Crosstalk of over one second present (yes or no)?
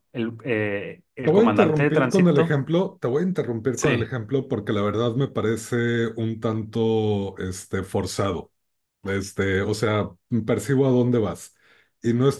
yes